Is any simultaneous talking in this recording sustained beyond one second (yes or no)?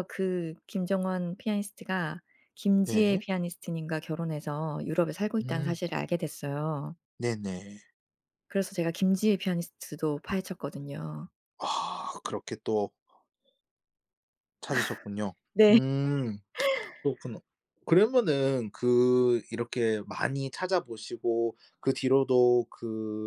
no